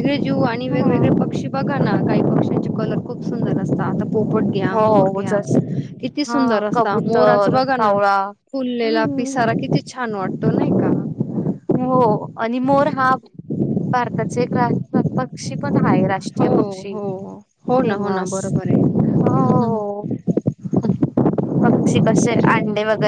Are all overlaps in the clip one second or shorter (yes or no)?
no